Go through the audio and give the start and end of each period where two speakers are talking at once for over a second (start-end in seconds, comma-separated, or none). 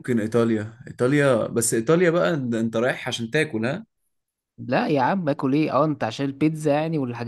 none